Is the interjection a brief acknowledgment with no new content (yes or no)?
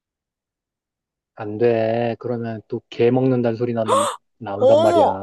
no